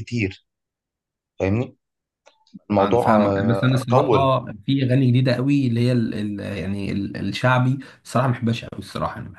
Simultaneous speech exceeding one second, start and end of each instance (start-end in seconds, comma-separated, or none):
2.8-4.3